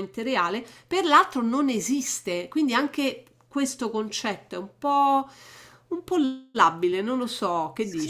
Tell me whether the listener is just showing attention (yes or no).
no